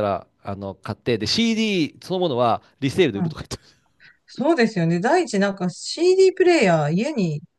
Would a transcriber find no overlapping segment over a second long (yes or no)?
yes